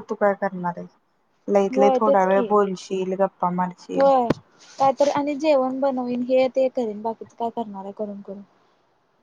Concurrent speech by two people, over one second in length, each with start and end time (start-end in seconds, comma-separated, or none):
none